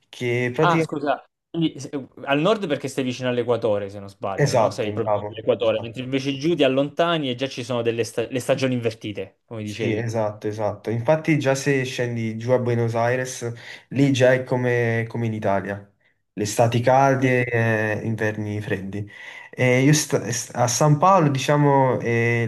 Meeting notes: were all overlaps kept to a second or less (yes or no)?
no